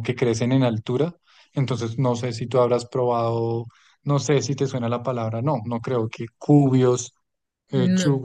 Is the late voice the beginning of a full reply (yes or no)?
no